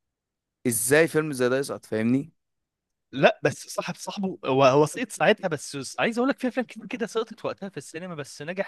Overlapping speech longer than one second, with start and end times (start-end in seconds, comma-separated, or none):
none